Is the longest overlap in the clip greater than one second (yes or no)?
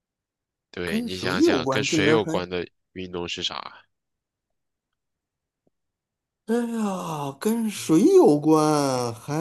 yes